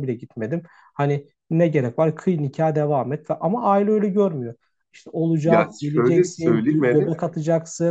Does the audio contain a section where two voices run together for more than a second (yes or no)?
yes